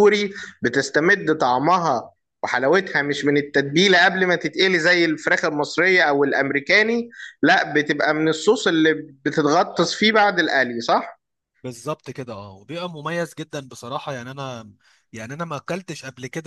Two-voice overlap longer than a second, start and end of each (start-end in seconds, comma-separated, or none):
none